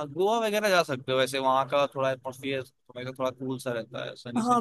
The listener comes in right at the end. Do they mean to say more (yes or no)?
yes